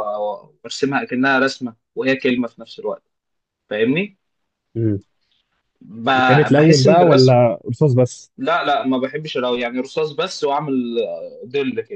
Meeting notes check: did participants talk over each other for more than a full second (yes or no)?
yes